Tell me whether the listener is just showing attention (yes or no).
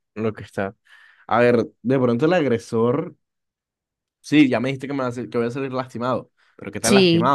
yes